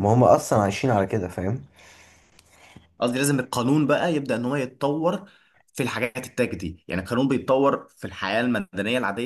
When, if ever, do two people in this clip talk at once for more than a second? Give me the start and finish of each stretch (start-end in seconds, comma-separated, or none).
none